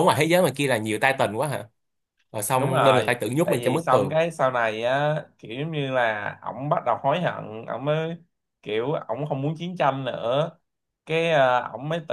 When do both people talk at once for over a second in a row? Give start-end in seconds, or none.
2.6-4.2